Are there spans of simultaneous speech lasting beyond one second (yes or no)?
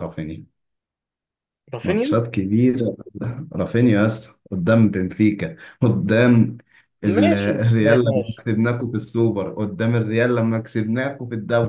yes